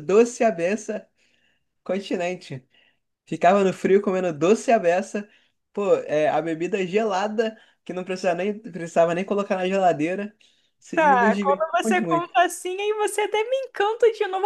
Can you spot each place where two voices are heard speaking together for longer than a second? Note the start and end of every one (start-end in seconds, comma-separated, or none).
10.9-12.3